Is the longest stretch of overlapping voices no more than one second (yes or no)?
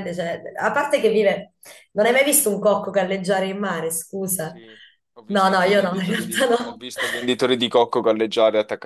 no